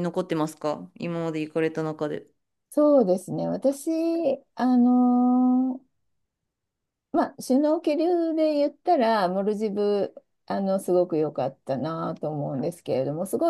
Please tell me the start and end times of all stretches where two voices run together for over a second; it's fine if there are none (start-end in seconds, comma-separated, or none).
none